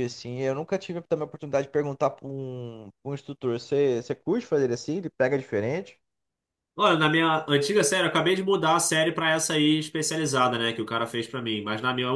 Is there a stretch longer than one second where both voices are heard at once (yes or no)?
no